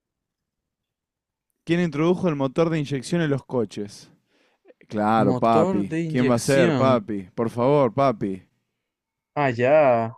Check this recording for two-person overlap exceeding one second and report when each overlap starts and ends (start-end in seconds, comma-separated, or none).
5.2-7.0